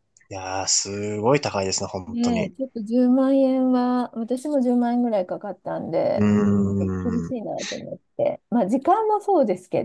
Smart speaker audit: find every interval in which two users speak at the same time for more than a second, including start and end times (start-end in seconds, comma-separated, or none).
none